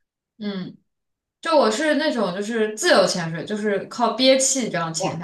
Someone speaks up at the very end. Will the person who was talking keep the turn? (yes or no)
no